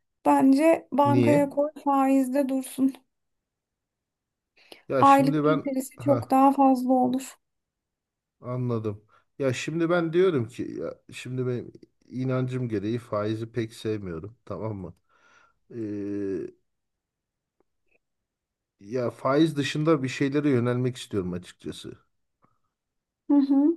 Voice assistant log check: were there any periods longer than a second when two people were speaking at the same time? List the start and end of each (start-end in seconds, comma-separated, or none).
5.0-6.3